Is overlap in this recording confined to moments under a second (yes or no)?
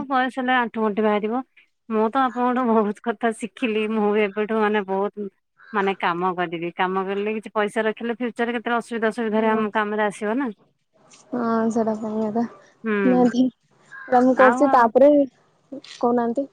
yes